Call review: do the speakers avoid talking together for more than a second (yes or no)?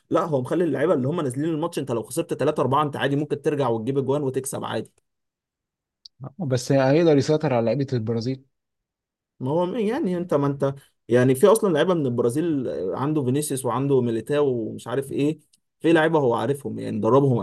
yes